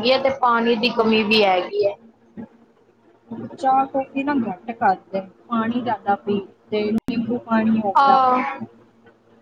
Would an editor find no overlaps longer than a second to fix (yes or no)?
yes